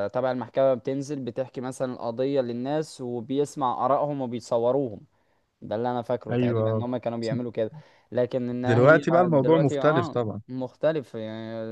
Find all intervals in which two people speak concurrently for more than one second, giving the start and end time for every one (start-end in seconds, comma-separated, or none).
8.7-10.4